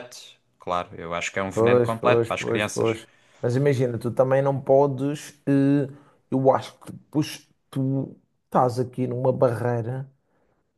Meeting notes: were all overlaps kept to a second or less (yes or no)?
no